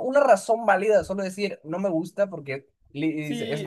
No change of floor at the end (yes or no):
no